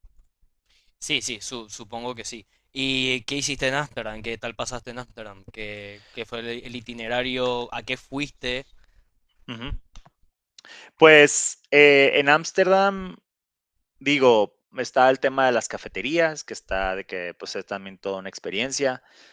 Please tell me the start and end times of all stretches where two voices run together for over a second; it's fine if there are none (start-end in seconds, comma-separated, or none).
none